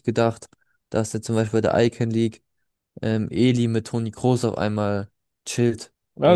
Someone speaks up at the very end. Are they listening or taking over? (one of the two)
taking over